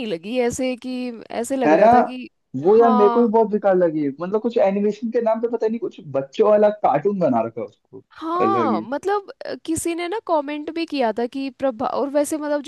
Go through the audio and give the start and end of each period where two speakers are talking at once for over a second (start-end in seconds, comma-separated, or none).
none